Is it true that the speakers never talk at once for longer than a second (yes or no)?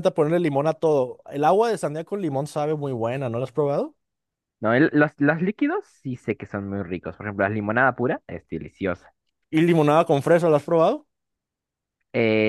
yes